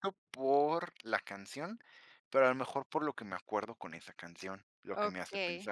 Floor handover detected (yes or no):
yes